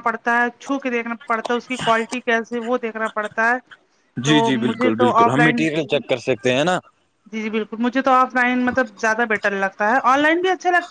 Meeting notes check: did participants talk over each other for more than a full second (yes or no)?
yes